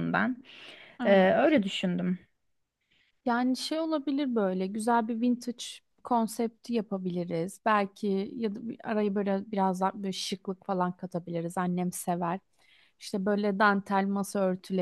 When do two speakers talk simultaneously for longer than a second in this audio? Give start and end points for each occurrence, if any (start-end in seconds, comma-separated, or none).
none